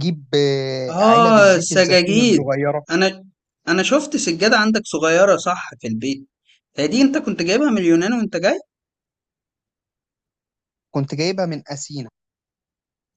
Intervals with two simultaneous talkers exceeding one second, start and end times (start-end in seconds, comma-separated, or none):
0.9-2.5